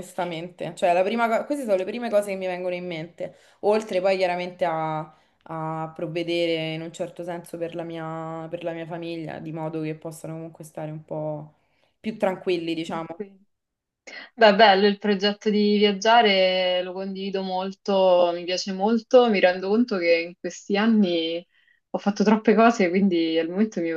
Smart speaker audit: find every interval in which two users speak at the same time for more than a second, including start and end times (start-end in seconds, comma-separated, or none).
none